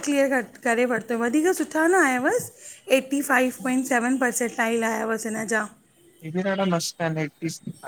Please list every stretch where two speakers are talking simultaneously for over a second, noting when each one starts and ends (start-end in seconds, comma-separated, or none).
none